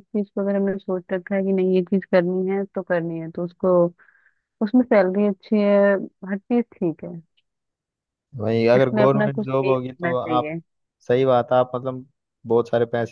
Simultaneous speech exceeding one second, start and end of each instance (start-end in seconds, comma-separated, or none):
8.7-10.5